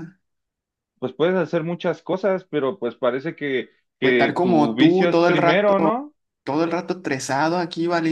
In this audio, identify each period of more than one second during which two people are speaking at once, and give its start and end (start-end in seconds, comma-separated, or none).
4.0-5.7